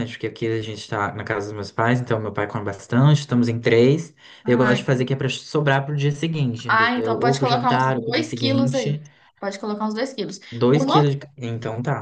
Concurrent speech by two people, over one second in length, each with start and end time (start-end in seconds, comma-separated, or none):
6.7-9.0